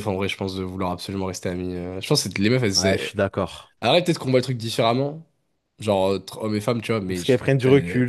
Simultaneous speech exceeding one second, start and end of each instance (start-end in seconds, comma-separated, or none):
none